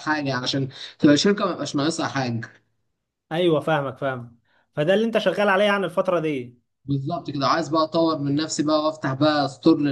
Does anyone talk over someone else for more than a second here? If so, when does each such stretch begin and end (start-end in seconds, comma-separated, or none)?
none